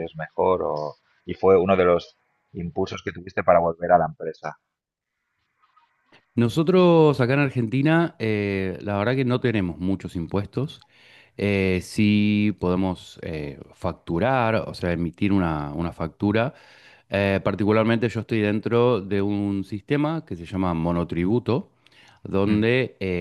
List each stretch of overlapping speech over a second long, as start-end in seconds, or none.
none